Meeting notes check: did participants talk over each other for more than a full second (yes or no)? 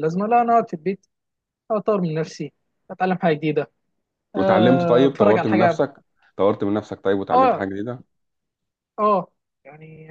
yes